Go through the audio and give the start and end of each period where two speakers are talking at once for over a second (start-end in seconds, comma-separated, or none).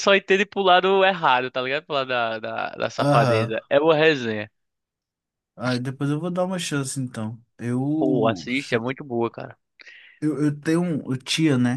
none